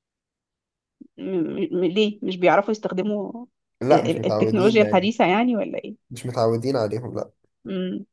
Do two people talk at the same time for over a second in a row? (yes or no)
yes